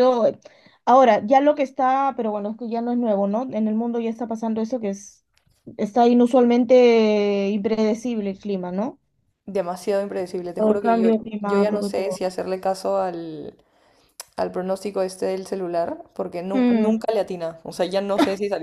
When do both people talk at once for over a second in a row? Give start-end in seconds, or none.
10.6-12.2